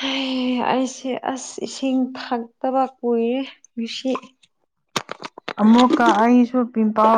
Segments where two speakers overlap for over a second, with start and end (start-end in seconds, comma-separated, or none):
none